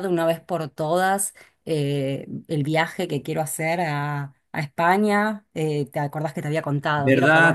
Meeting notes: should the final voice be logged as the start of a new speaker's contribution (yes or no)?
yes